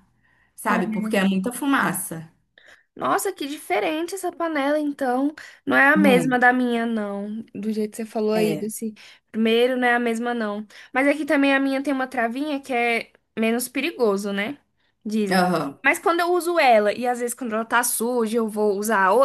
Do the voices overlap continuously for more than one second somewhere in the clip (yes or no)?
no